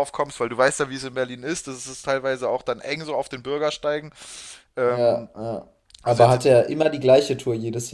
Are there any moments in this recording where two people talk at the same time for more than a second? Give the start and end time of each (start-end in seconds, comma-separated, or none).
none